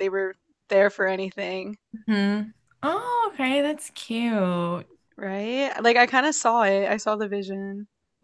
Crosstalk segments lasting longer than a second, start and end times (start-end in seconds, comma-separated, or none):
none